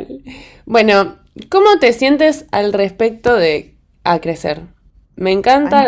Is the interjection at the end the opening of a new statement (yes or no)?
no